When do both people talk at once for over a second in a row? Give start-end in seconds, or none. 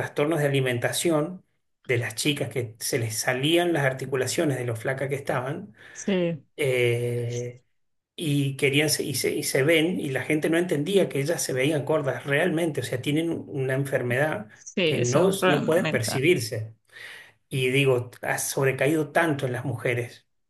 14.8-16.2